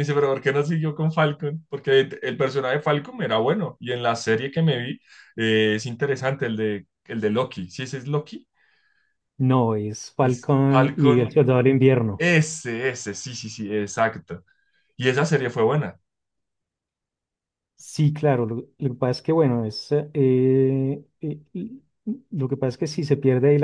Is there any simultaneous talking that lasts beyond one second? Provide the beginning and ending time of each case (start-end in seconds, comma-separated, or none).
10.2-11.5